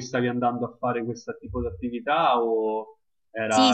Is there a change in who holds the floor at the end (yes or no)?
yes